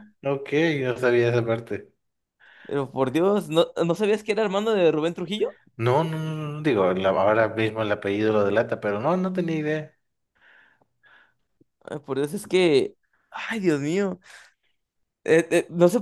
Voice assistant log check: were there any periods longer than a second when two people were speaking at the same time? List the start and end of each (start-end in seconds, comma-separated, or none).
none